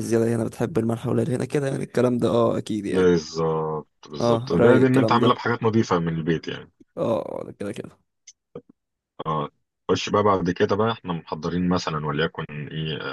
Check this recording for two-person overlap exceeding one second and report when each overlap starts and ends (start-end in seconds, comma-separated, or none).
4.2-5.4